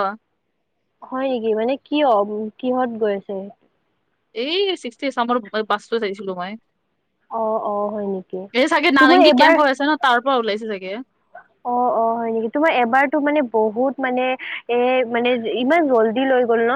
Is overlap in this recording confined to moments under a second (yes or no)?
yes